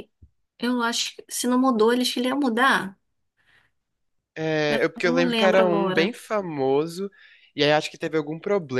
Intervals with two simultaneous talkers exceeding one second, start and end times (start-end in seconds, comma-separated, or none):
4.7-6.2